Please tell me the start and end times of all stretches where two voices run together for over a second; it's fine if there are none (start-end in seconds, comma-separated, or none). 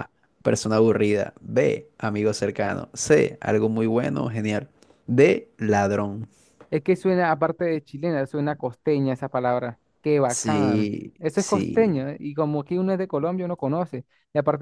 10.3-12.1